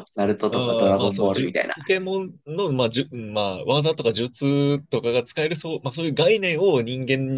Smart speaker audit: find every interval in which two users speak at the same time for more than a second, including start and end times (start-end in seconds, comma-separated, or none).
0.5-1.7